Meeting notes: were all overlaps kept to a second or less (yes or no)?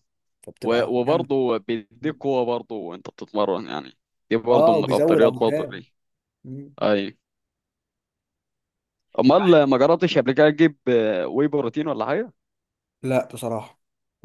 no